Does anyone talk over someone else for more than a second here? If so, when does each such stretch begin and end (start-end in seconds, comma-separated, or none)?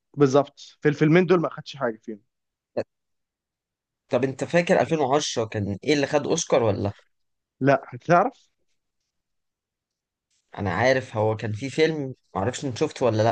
none